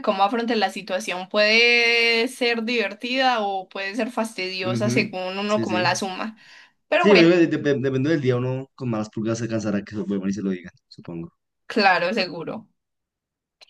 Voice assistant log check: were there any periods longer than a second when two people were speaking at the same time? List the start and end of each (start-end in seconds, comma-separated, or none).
4.6-6.0